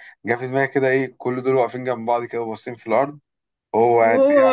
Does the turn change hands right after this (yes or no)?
no